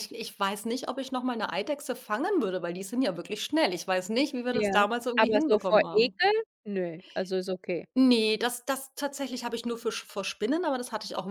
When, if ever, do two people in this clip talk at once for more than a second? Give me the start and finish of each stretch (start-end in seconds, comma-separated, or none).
4.5-6.2